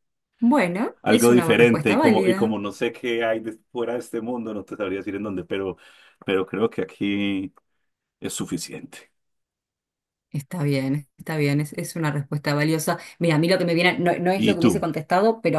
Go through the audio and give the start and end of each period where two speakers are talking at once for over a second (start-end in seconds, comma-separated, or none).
1.0-2.6